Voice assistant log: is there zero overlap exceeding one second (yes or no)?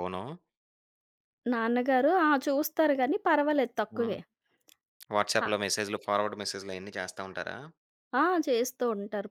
yes